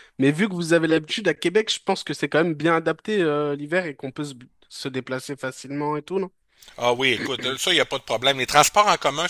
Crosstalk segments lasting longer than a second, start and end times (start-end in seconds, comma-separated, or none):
none